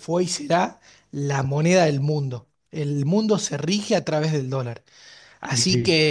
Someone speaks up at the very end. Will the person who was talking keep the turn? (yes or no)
yes